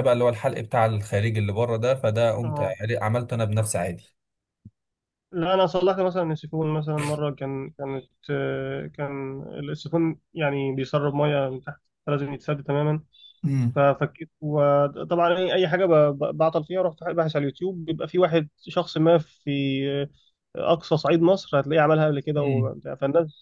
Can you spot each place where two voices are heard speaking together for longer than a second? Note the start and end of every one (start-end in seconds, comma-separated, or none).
none